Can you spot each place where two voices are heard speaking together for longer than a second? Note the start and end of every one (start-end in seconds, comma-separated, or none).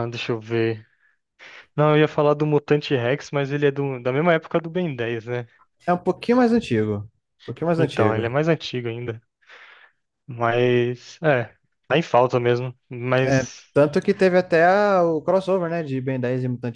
none